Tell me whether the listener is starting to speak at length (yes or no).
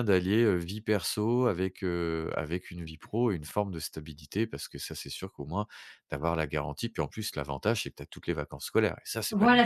yes